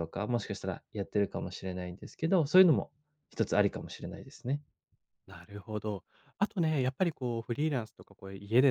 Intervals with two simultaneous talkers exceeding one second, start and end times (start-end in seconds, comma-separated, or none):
none